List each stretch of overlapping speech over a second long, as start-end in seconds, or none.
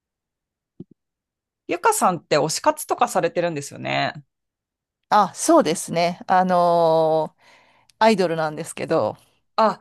none